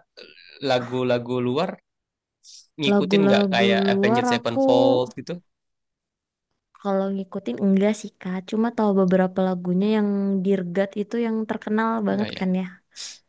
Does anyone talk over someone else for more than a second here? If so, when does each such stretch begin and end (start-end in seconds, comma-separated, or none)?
2.9-4.6